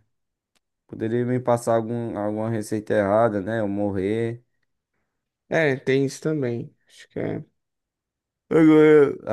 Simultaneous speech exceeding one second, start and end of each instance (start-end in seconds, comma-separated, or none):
none